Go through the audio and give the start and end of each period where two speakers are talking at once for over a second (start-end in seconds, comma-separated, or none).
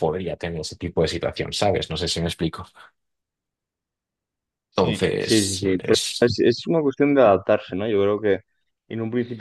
4.8-6.3